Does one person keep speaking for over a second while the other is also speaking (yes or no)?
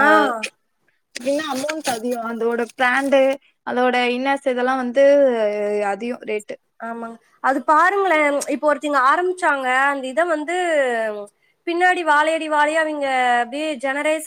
no